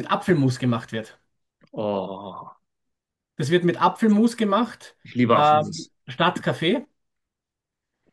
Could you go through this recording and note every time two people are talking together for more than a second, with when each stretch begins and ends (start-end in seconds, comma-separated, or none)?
none